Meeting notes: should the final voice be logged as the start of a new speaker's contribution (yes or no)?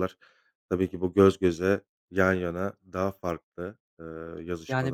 yes